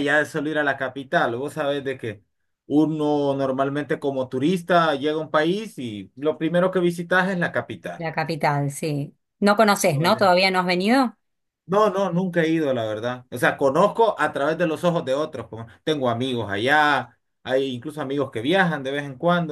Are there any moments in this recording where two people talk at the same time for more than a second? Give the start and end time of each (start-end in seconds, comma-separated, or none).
none